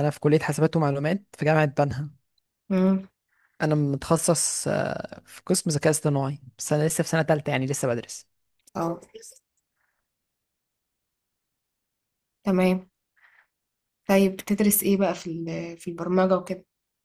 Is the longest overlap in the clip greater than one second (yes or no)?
no